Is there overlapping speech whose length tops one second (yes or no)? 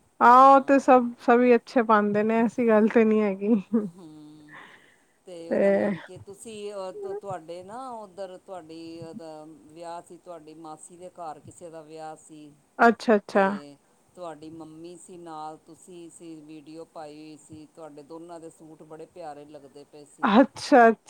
no